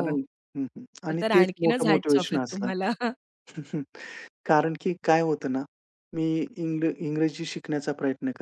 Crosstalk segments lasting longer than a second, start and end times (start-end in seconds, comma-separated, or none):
1.1-2.7